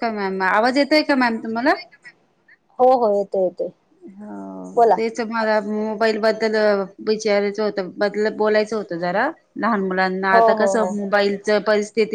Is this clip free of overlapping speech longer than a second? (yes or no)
yes